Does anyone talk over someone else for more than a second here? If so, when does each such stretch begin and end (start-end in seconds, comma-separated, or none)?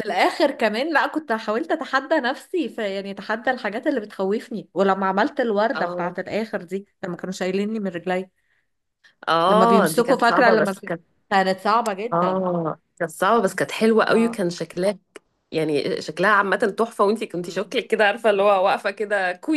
9.5-10.9